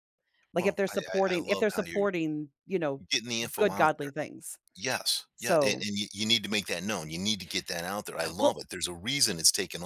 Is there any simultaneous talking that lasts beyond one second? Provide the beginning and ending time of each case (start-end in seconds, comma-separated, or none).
0.6-2.1